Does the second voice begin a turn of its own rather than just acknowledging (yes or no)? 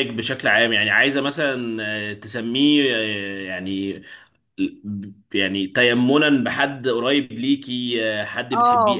yes